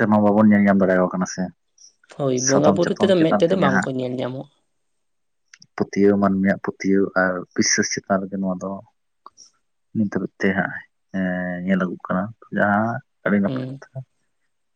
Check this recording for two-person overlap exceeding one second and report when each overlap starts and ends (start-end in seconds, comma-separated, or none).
2.5-3.9